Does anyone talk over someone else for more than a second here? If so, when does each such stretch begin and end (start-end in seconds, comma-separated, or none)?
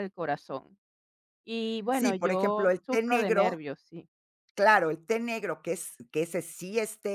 1.9-3.6